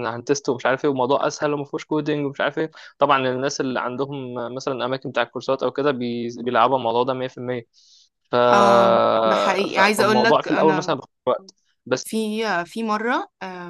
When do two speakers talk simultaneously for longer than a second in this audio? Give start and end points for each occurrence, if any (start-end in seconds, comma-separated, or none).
9.7-10.9